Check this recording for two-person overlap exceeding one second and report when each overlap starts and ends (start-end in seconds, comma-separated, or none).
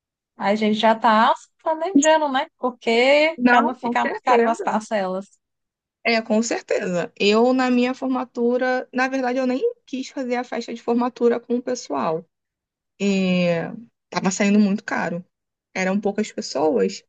3.4-4.8